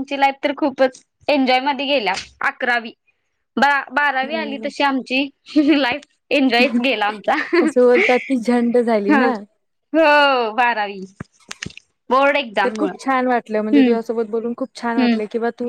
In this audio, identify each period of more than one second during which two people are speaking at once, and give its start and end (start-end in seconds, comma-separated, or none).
none